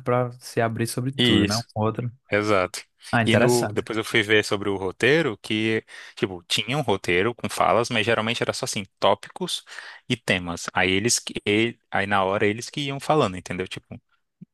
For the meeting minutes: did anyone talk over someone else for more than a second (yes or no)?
no